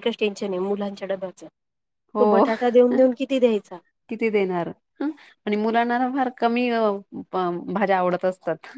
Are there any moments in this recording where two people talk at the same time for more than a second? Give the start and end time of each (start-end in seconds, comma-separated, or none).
none